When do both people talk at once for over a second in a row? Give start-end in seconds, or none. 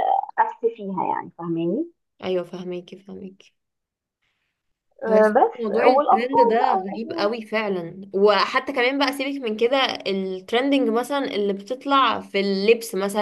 5.1-7.3